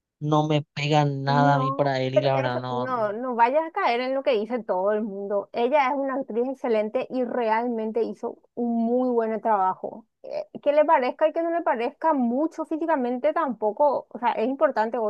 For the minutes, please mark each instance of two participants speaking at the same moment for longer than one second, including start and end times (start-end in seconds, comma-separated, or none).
1.2-2.9